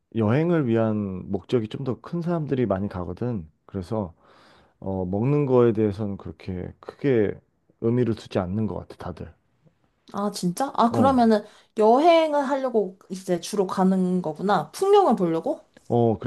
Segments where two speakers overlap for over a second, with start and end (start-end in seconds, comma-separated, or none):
none